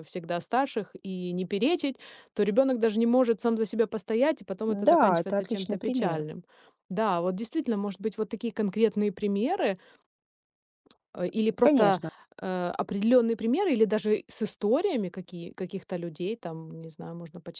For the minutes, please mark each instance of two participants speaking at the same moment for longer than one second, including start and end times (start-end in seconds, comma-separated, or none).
4.7-6.2